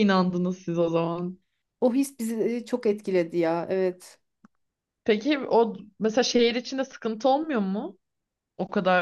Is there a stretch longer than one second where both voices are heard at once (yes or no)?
no